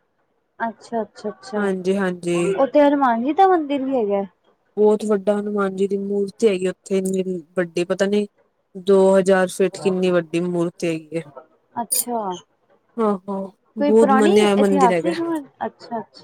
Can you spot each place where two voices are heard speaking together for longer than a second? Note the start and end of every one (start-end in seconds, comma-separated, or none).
13.8-15.1